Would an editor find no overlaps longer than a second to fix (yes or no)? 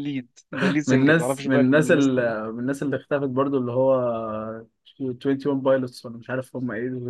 no